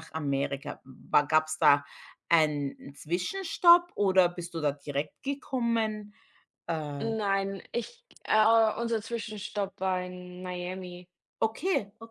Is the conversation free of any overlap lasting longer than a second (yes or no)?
yes